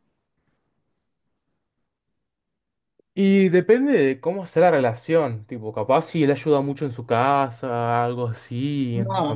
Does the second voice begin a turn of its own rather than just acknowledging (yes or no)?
yes